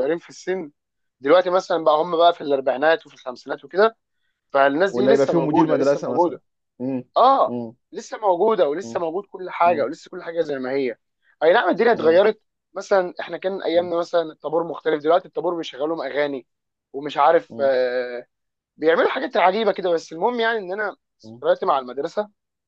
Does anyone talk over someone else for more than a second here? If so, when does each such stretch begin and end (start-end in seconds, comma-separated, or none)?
4.9-6.4